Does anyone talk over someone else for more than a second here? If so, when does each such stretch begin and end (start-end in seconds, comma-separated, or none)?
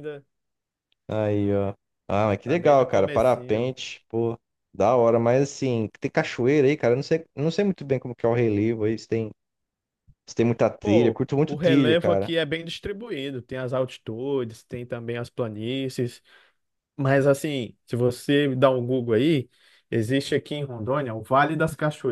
2.4-3.7, 10.8-12.3